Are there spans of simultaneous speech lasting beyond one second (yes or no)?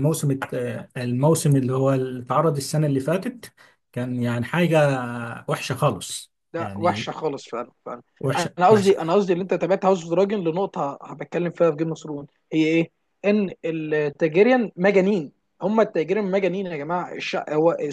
no